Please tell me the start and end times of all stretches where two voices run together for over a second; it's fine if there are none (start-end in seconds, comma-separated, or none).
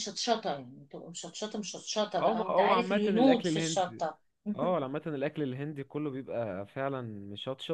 2.2-4.0